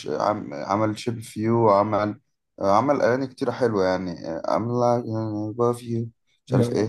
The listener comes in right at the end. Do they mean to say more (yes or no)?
no